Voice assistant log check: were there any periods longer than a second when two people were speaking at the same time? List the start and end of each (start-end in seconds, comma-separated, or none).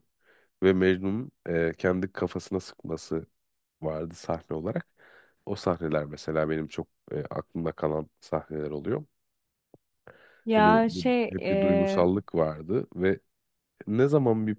10.6-12.1